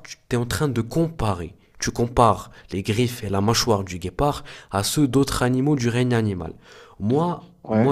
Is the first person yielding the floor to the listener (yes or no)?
no